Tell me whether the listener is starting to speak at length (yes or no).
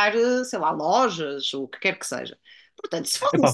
yes